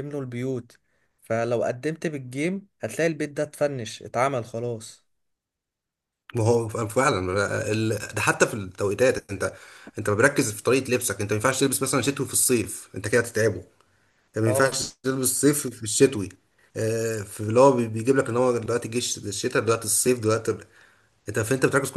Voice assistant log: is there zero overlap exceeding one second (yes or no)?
yes